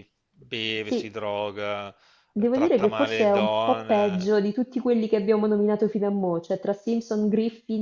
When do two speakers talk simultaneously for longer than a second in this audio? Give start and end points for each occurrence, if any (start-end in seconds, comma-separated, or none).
2.4-4.3